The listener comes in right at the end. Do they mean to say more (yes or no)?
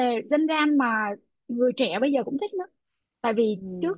no